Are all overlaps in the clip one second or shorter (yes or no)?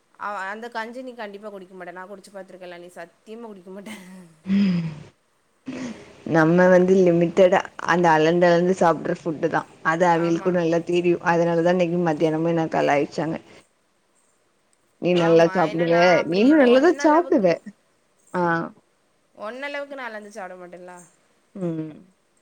no